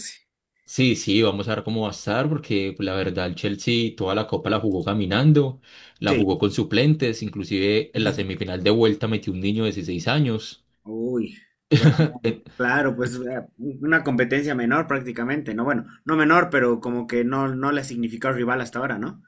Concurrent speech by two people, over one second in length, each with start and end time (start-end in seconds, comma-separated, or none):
none